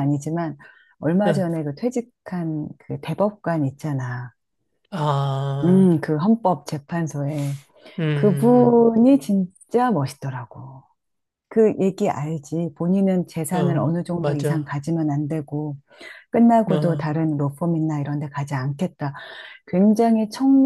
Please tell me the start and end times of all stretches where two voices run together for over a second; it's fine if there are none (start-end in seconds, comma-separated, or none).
13.5-14.8